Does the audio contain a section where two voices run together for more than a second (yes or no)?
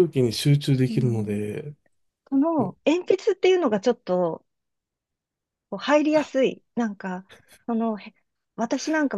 no